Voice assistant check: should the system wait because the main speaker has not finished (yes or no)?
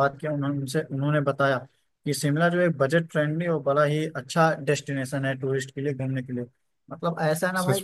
yes